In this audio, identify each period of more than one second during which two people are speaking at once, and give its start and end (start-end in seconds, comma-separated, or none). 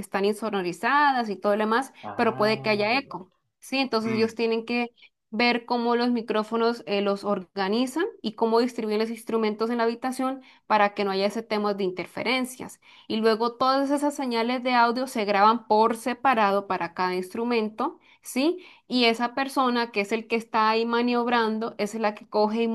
2.0-3.2